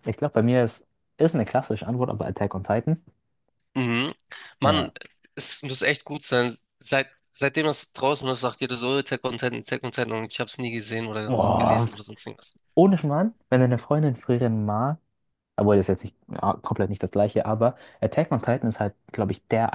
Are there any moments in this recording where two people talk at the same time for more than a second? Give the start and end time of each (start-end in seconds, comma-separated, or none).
none